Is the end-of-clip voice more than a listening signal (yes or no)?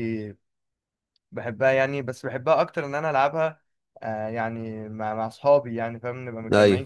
yes